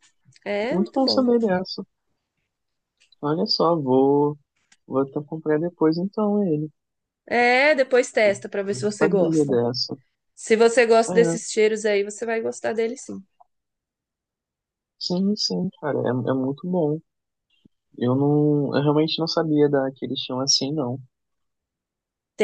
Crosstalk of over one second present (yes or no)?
yes